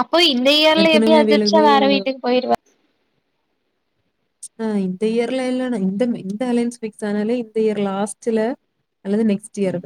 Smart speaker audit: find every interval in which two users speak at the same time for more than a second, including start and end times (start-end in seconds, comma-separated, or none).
none